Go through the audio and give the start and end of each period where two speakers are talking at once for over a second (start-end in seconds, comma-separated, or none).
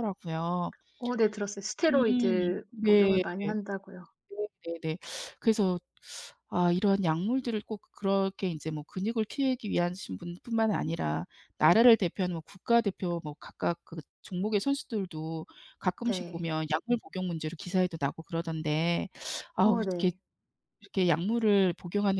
1.9-3.2